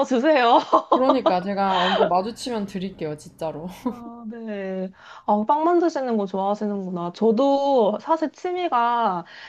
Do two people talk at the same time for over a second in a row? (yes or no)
no